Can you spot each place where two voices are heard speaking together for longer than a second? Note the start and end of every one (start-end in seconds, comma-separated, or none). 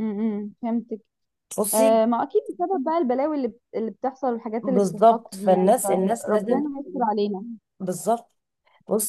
4.6-6.6